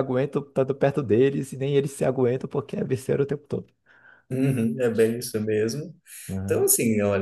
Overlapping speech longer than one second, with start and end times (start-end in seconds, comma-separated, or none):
none